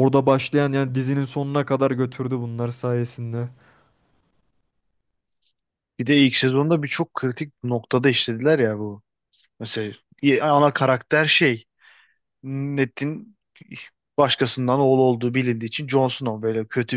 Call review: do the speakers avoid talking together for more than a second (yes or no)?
yes